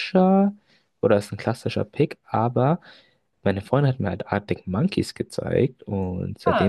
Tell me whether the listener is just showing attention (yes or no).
yes